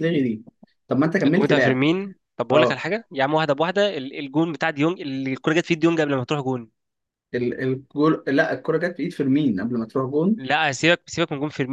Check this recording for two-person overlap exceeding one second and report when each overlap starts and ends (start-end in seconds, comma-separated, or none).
none